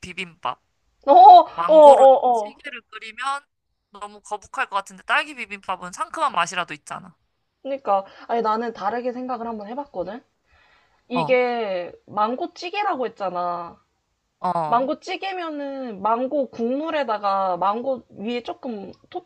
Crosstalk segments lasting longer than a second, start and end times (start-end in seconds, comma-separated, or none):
none